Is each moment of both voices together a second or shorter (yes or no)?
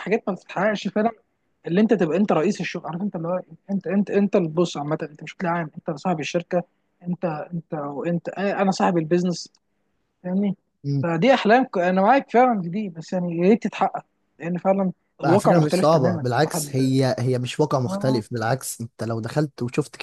no